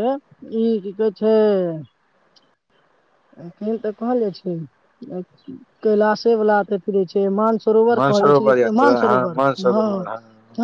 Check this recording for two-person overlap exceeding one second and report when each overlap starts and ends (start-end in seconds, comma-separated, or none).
8.0-9.9